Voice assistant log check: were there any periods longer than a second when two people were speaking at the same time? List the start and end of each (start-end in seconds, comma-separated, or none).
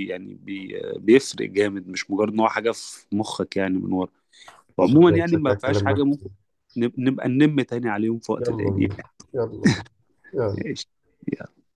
4.8-6.3